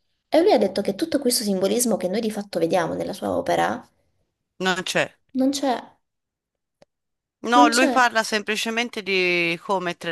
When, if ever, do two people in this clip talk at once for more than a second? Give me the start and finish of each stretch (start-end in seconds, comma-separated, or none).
none